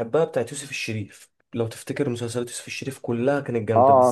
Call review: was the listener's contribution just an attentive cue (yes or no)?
yes